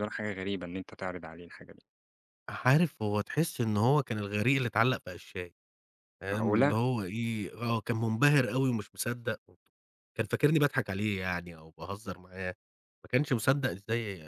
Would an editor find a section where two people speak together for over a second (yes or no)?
no